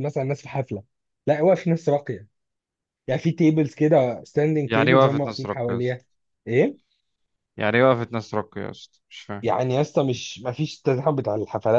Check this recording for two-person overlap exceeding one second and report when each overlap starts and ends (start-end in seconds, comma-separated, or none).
4.6-6.0